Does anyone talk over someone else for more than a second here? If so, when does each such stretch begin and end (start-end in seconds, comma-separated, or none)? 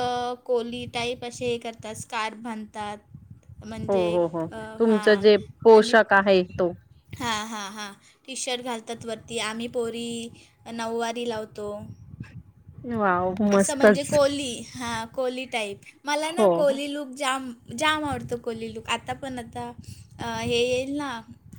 none